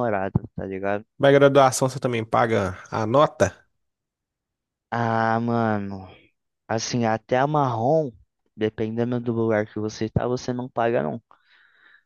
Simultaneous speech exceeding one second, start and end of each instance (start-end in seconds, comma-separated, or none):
none